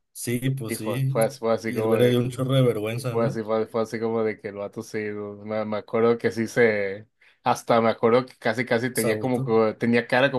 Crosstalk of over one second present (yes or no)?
yes